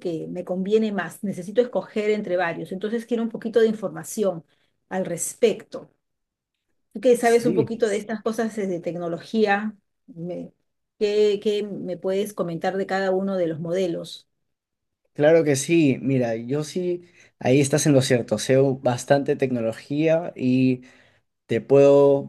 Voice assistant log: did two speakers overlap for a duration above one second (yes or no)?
no